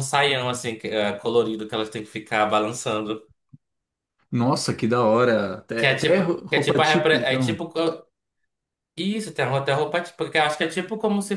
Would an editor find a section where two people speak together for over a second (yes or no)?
yes